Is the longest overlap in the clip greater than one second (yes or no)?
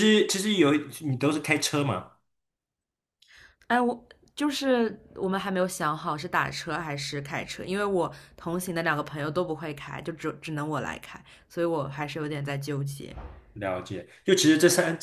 no